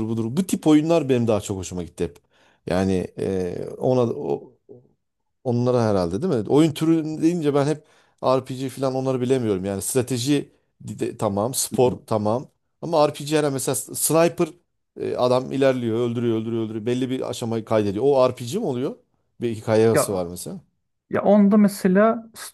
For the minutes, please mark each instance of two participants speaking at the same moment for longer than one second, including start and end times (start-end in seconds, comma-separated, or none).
none